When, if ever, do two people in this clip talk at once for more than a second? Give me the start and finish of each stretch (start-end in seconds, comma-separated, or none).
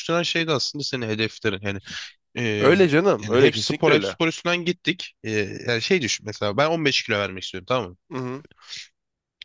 2.6-4.2